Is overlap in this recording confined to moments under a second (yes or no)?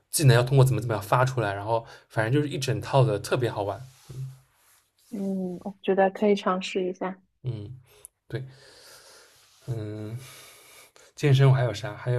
yes